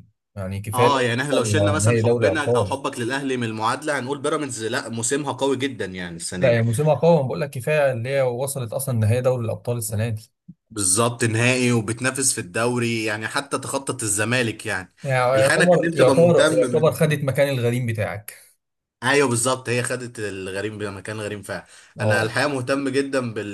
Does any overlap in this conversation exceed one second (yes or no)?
yes